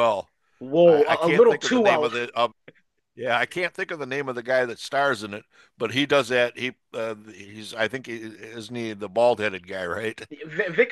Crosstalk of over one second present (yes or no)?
yes